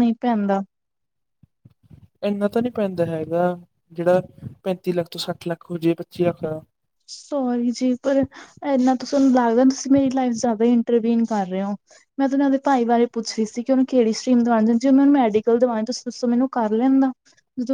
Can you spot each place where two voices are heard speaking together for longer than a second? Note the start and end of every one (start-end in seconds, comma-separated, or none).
none